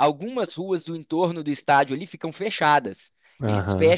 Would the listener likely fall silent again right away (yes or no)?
yes